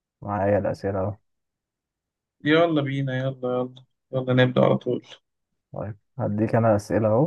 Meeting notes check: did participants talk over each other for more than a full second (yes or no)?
no